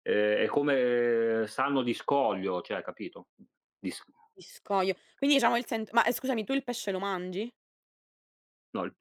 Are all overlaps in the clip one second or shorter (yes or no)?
yes